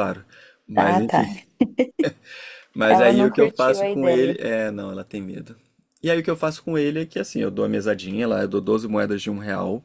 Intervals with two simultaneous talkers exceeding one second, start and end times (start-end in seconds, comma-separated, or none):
2.9-4.4